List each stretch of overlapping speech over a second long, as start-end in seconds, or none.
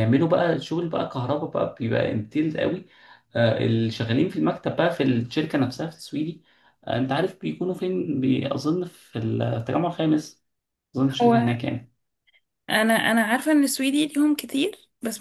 none